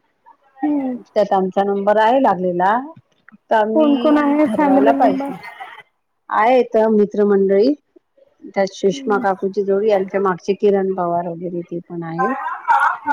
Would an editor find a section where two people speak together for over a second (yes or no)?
yes